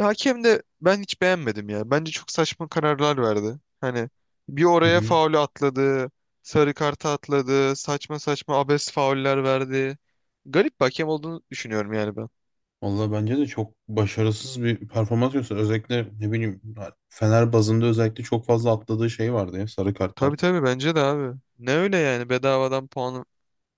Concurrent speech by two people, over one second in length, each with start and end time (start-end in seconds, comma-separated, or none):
none